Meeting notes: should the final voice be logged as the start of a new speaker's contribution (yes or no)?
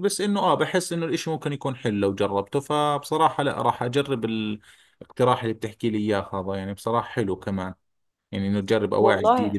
no